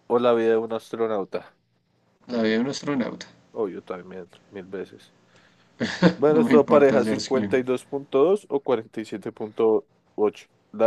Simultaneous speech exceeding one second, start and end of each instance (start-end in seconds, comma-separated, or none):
6.3-7.6